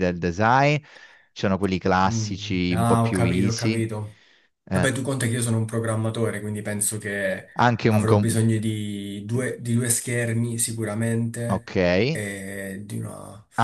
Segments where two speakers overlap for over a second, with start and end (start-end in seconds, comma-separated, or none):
2.1-3.9